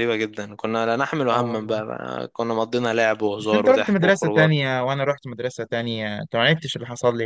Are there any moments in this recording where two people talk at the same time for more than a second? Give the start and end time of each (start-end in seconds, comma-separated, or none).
3.4-4.6